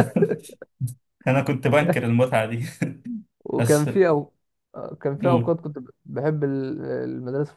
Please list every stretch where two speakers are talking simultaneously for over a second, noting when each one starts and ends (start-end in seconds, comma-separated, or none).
none